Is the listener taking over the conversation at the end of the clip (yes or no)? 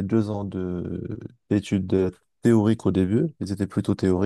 no